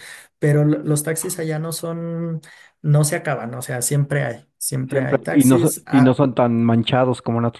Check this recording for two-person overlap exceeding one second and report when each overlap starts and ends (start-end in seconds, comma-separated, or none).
4.9-6.2